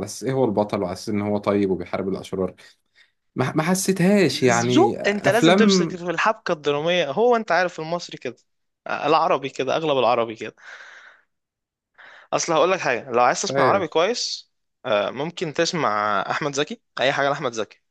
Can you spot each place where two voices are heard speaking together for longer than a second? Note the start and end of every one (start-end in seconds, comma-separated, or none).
4.7-6.0